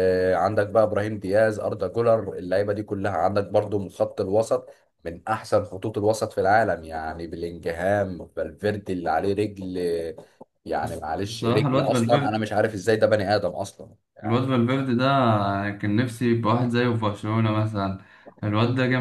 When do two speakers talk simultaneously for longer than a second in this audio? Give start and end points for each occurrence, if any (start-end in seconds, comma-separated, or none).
10.8-12.4